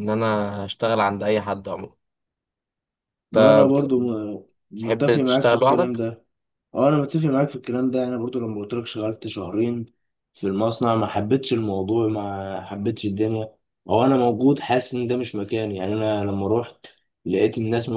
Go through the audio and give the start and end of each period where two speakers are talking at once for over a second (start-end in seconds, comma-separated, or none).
4.8-6.0